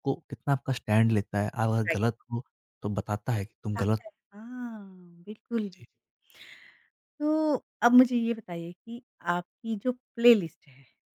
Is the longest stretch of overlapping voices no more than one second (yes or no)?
yes